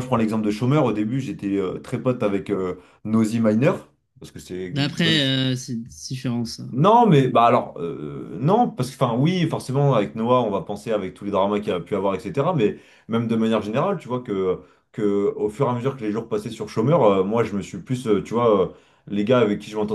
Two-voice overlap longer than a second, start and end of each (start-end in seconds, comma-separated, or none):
none